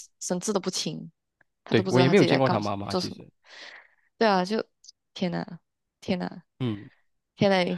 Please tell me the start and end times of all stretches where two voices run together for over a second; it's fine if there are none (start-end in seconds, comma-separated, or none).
1.7-3.2